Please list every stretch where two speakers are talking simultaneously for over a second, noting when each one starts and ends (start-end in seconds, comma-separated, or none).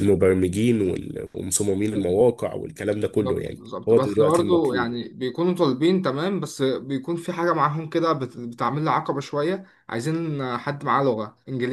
3.1-5.0